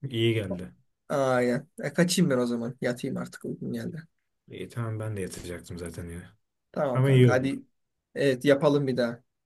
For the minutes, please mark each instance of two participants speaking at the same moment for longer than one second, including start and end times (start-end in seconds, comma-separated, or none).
none